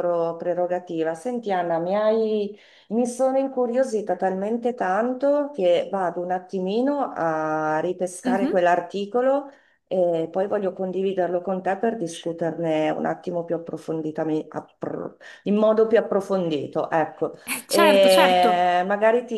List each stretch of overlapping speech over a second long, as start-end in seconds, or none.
17.5-18.7